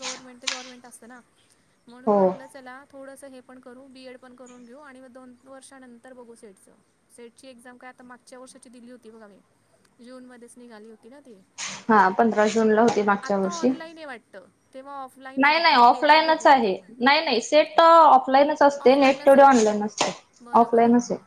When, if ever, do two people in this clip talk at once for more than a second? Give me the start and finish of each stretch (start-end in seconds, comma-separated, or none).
15.4-17.1